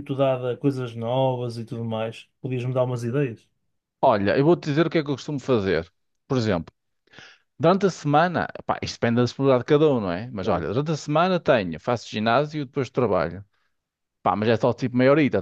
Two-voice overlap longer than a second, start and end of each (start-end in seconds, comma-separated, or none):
none